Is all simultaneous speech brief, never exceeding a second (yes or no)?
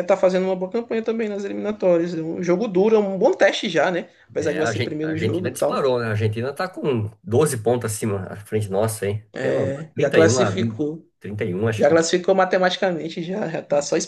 no